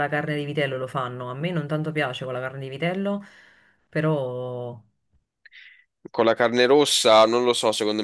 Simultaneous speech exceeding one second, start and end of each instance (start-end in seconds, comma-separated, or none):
none